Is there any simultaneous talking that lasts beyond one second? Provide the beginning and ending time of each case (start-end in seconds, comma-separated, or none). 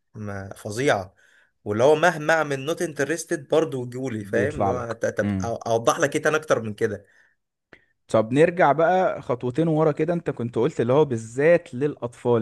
4.2-5.5